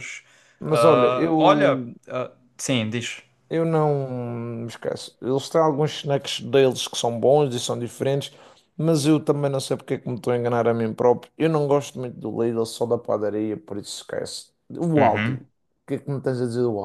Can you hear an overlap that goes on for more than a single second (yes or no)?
yes